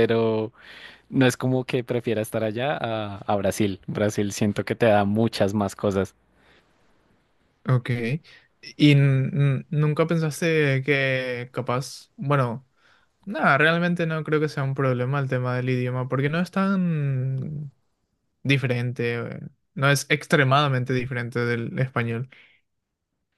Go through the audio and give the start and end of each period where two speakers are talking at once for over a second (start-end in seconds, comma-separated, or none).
none